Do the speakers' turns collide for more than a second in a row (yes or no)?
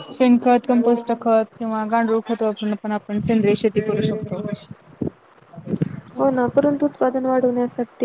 no